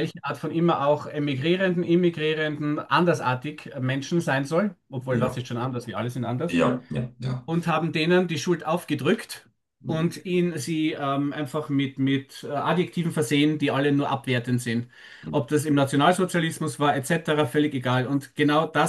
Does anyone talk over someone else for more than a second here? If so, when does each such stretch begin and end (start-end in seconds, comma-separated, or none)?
none